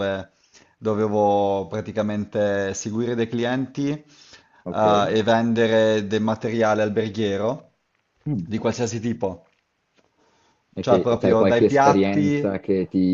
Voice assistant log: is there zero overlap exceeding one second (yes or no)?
no